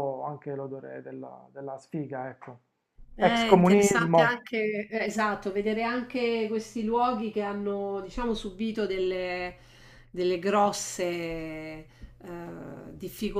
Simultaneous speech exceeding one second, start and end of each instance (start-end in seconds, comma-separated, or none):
3.2-4.5